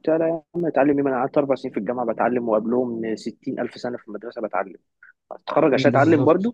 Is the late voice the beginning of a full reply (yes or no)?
no